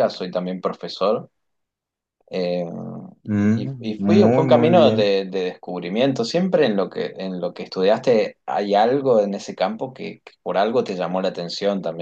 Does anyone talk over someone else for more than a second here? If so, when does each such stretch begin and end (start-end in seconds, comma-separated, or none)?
3.5-5.1